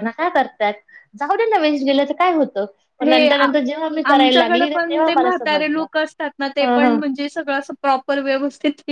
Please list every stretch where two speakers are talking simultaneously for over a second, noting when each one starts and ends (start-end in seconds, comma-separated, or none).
4.1-5.8